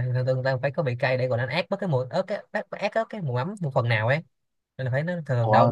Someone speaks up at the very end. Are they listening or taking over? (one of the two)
listening